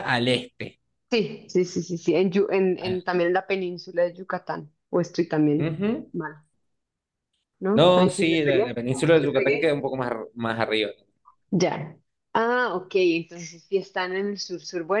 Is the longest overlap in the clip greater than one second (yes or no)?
yes